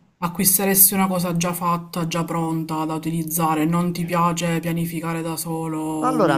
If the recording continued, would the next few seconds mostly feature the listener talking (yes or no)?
yes